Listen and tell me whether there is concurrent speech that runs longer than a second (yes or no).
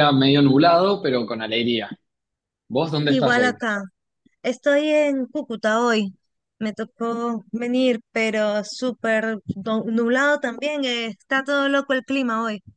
no